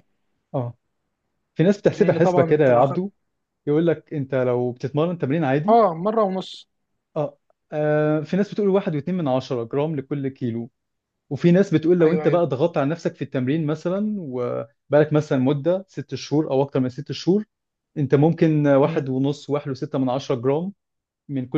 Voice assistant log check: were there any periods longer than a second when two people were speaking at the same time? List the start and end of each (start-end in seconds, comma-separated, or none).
1.9-3.1